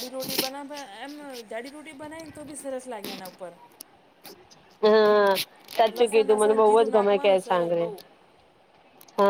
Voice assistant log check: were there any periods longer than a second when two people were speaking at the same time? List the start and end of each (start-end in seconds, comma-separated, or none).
6.0-7.9